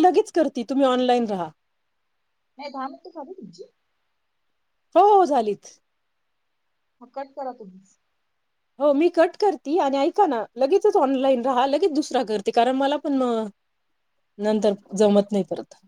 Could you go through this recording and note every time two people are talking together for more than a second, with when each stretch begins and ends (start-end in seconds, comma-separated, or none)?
none